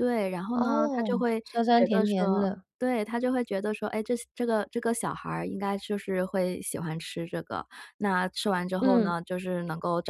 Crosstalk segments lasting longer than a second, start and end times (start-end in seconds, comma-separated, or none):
0.5-2.6